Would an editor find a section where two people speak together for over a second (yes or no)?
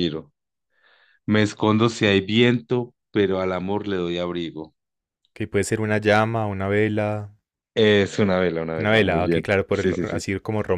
yes